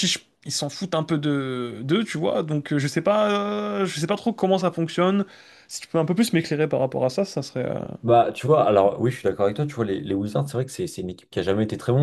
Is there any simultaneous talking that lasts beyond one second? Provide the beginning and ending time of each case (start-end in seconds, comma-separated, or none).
none